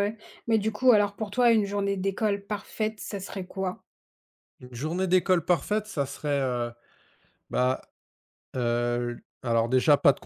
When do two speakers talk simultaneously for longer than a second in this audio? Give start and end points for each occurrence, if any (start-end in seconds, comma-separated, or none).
none